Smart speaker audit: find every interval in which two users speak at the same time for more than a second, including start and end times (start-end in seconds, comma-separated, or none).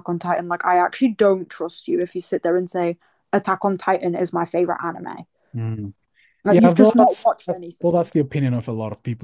6.5-8.1